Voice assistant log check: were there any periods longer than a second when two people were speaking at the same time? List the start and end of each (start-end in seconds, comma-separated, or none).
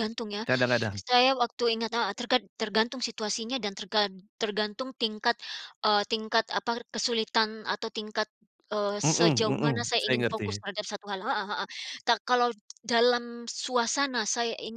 9.0-10.6